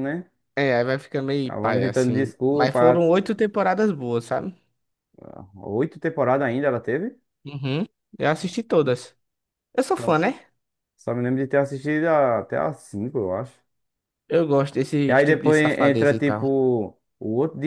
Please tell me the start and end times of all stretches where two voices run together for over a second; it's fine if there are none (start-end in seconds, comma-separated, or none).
1.5-3.1, 15.1-16.5